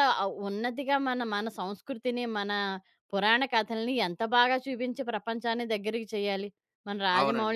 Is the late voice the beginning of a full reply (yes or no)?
yes